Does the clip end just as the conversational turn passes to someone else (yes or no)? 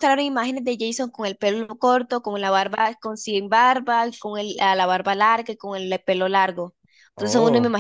no